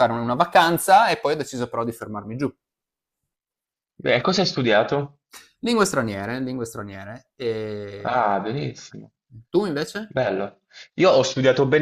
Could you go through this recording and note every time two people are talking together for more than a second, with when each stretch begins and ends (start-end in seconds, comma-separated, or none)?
none